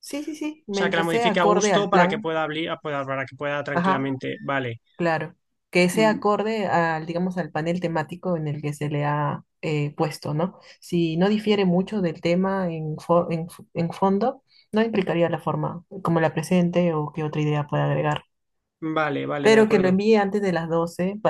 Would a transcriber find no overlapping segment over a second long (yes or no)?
no